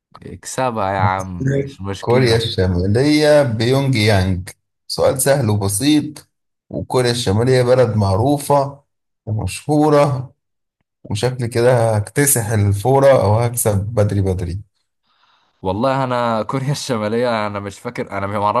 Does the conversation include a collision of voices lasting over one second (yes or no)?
yes